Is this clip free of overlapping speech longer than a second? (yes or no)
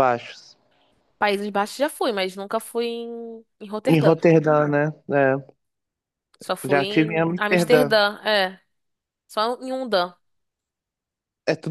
no